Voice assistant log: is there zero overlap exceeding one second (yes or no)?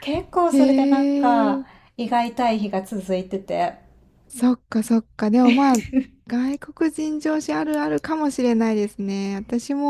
yes